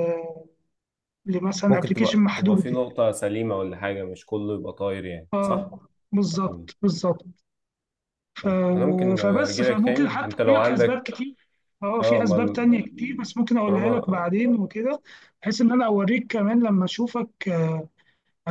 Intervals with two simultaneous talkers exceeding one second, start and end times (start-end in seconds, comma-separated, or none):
1.7-3.0, 9.2-11.0, 12.0-14.3